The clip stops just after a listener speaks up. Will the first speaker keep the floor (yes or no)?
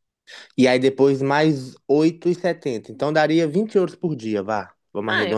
no